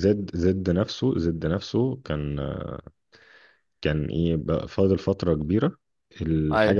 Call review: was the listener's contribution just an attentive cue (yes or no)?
yes